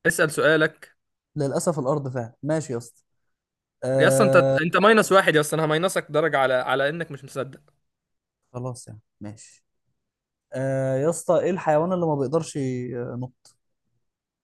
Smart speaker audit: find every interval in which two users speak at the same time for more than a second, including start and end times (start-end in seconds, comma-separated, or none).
none